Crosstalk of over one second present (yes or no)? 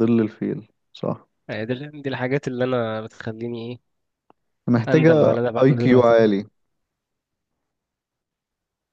yes